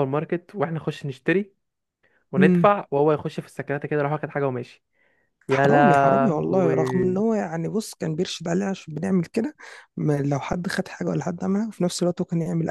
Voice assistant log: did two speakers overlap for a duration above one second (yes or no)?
yes